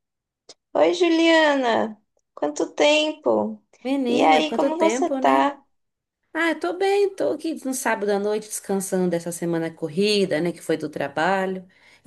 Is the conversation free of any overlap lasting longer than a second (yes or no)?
no